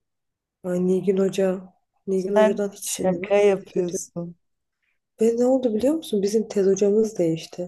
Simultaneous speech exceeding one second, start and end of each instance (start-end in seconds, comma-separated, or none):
2.1-4.0